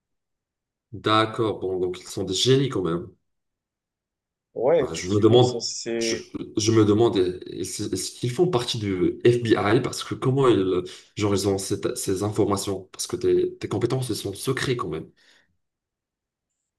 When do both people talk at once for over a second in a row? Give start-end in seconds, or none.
4.8-6.2